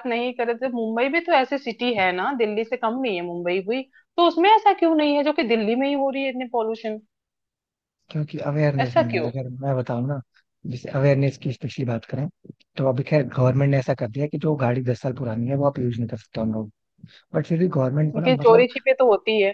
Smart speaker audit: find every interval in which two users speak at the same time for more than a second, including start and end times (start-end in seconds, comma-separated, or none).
none